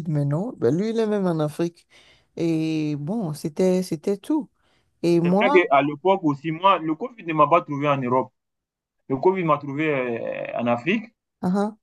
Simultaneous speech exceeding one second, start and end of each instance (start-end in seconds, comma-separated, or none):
none